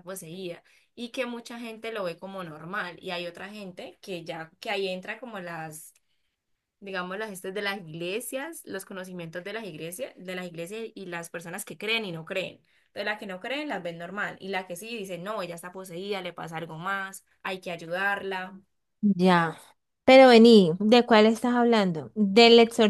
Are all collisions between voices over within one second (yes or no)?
yes